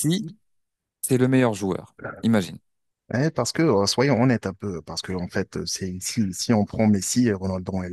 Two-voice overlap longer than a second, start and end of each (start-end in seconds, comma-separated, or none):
none